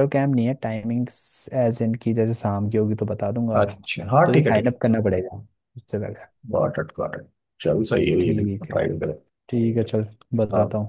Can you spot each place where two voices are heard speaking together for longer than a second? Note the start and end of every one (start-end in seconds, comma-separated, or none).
none